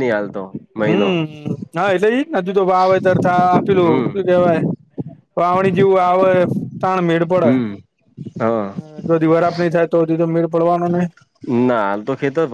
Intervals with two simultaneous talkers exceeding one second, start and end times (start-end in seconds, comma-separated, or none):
none